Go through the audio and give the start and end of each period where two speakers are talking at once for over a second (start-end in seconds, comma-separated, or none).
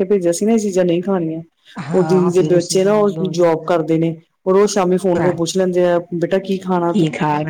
1.9-3.7